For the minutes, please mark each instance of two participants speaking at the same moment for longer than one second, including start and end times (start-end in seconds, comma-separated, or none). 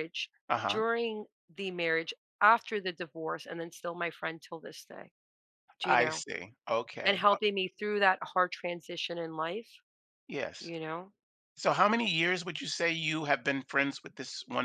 none